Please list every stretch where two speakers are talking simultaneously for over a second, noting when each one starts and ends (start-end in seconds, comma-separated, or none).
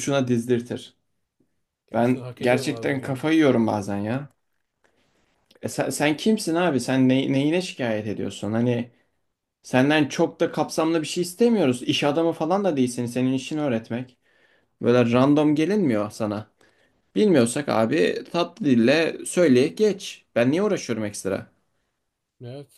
1.9-3.2